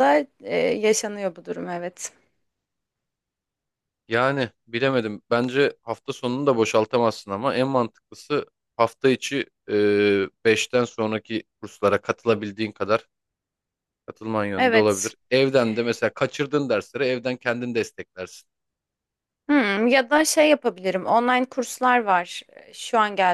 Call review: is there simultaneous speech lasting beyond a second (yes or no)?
no